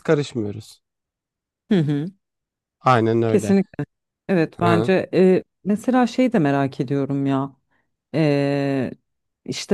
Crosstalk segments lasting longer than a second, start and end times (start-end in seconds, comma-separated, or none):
none